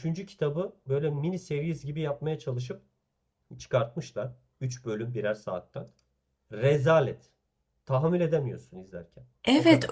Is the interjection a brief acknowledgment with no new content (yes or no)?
no